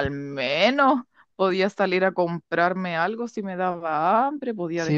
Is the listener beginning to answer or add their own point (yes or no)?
yes